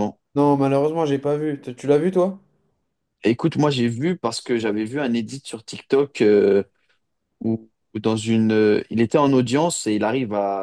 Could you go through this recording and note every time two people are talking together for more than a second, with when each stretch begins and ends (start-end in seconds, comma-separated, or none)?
none